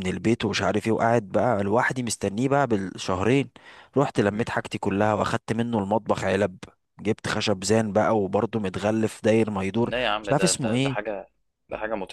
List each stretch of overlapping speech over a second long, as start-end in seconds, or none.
9.8-11.1